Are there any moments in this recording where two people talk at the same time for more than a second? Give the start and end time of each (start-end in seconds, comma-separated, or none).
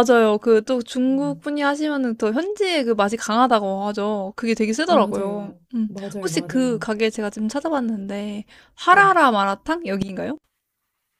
4.9-6.9